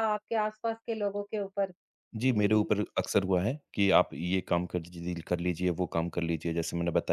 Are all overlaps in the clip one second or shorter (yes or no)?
yes